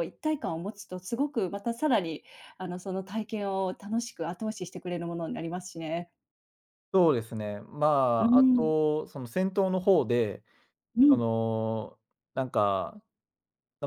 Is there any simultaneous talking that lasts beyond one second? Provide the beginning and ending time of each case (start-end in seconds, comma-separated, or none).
none